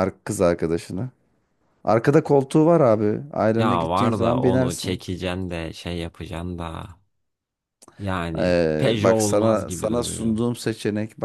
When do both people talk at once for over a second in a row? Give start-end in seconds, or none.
3.6-5.0, 8.4-10.4